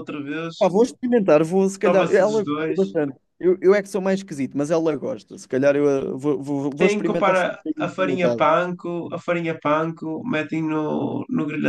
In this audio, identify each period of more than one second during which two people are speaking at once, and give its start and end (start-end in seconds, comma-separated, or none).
1.7-3.0, 6.8-8.5